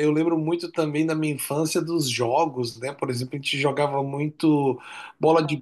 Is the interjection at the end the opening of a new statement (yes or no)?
no